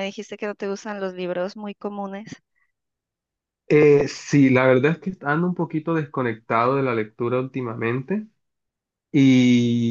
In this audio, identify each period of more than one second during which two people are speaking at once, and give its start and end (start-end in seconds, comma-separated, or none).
none